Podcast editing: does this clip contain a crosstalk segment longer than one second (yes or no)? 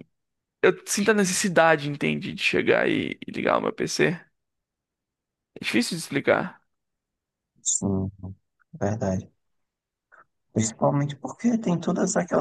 no